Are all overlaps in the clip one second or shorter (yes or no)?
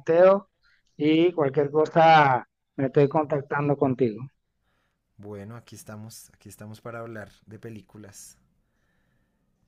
yes